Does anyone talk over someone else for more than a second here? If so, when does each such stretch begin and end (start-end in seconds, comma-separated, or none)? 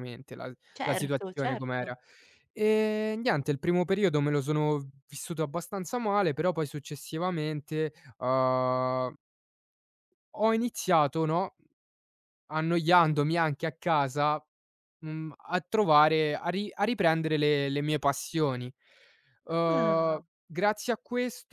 0.8-1.9